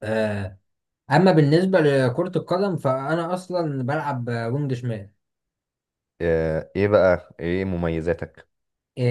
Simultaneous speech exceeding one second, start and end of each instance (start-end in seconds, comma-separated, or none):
none